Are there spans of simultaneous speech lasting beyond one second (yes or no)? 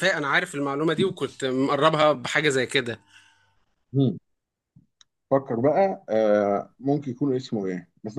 no